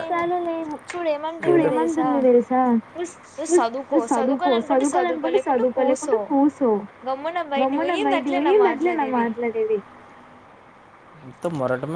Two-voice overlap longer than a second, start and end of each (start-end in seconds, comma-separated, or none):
3.6-6.2, 7.6-9.3